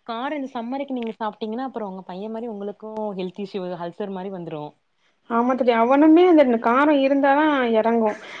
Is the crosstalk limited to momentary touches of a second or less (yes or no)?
yes